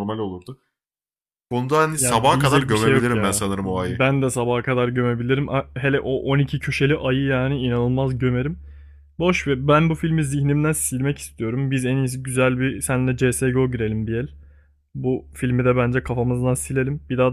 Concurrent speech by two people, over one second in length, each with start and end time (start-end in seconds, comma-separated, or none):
1.9-4.0